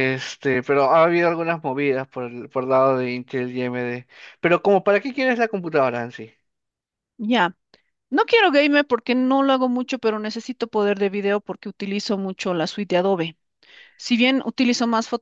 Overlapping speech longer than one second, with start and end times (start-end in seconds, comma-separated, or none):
none